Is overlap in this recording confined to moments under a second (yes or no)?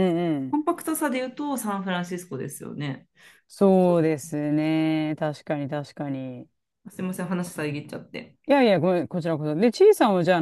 yes